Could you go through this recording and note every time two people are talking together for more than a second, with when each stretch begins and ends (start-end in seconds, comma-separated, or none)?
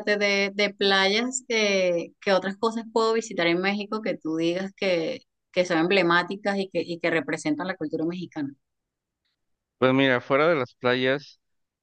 none